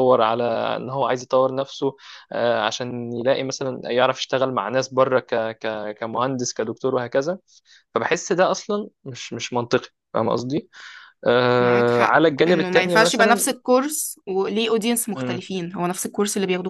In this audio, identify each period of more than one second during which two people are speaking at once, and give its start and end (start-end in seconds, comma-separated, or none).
11.6-13.5